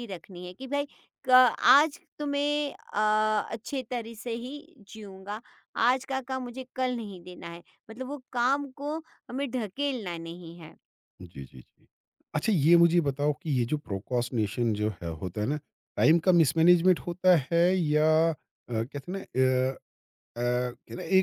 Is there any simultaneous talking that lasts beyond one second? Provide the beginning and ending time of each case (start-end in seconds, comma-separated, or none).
none